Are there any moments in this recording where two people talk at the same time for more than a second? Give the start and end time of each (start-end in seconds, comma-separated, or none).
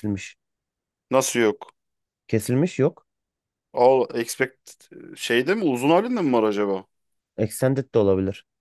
none